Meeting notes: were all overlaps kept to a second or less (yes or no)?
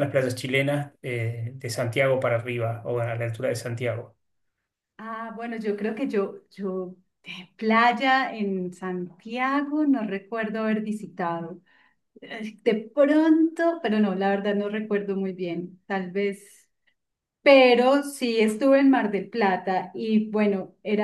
yes